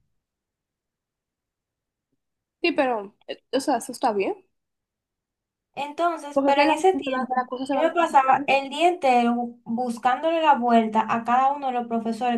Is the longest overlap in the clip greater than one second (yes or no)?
yes